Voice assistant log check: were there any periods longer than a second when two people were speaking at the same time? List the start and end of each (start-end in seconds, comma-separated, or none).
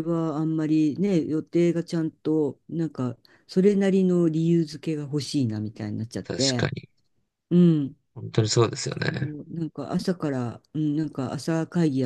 none